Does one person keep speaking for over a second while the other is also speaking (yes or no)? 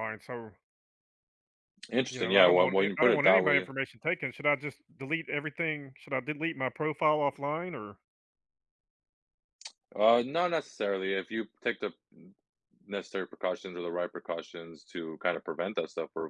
yes